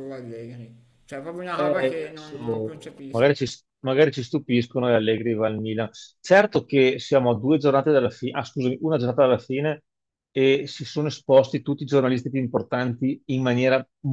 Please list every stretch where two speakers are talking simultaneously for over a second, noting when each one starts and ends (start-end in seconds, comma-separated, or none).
1.5-3.5